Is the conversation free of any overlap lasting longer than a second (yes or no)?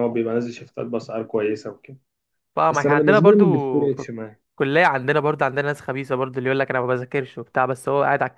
no